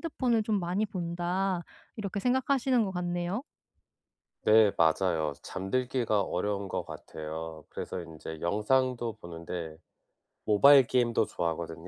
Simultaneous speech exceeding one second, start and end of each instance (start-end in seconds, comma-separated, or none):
none